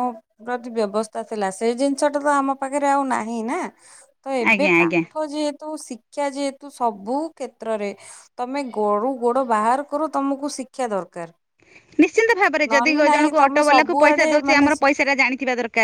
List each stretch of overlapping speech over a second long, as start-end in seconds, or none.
12.7-14.7